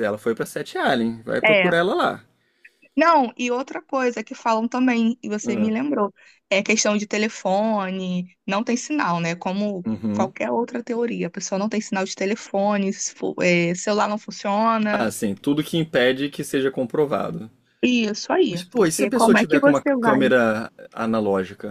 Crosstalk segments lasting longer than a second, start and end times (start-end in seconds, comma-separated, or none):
18.5-20.3